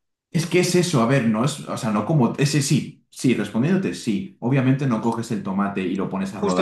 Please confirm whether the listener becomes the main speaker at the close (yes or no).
yes